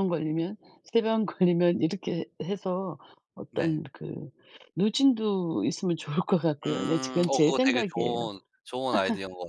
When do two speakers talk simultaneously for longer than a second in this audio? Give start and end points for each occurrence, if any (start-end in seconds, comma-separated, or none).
6.7-8.3